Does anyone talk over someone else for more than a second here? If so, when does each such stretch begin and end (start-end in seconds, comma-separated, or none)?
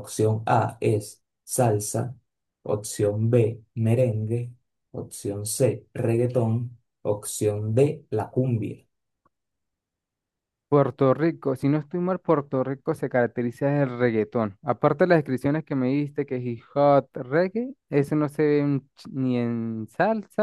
none